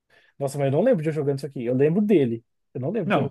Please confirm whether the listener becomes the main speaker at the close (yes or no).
yes